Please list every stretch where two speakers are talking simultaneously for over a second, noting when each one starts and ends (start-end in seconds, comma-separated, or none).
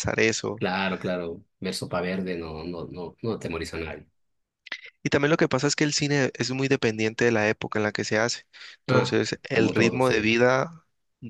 8.9-10.2